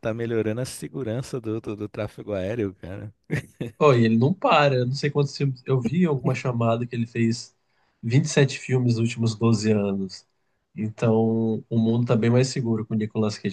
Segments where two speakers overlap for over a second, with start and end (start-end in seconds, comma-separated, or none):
none